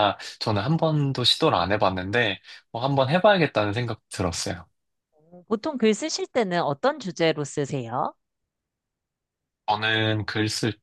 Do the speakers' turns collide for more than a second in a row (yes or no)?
no